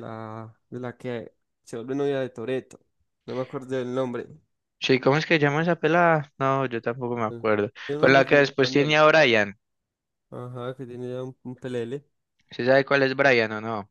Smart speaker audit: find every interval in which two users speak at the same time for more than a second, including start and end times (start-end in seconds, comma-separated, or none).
7.1-9.0